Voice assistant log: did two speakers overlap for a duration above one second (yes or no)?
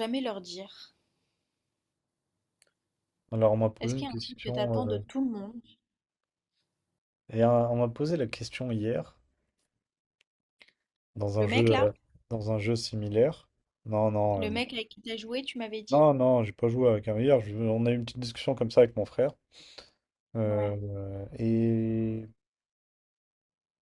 yes